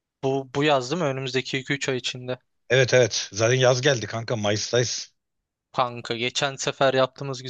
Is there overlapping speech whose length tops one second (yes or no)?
no